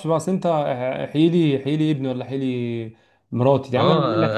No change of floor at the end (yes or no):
no